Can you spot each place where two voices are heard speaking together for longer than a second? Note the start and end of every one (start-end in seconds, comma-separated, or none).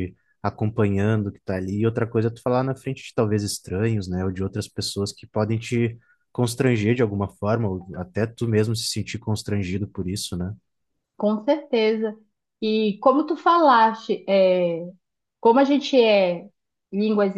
none